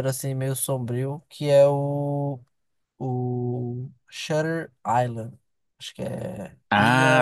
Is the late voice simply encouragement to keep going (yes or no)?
no